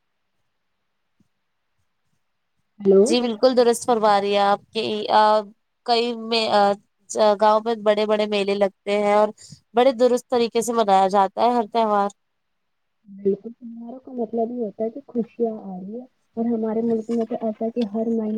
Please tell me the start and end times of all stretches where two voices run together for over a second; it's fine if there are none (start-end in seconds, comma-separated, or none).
none